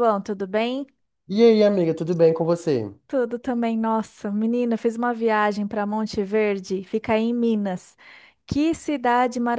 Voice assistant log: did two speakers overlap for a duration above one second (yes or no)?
no